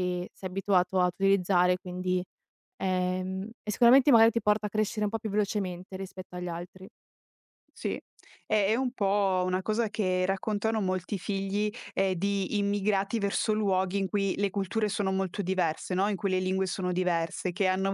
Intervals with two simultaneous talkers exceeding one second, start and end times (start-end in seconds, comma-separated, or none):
none